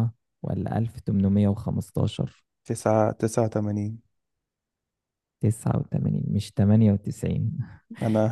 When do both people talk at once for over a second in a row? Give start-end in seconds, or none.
none